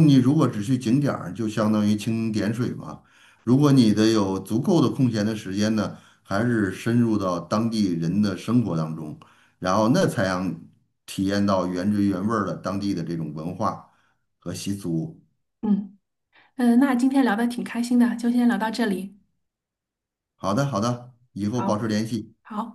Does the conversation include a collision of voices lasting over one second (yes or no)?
no